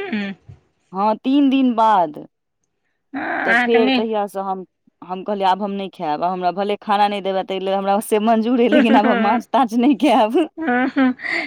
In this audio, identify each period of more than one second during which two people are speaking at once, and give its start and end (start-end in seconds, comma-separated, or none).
none